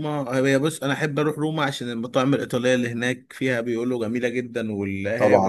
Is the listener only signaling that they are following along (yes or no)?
no